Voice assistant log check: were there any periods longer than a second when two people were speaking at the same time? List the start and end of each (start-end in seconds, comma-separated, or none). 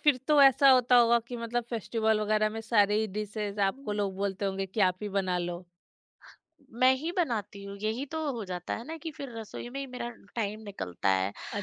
none